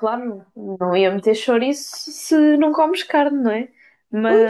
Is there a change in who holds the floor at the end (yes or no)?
no